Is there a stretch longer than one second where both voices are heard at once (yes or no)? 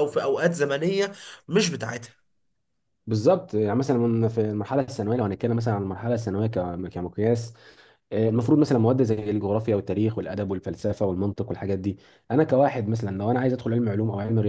no